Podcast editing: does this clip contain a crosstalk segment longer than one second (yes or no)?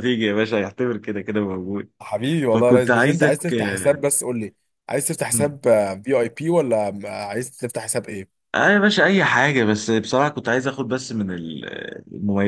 yes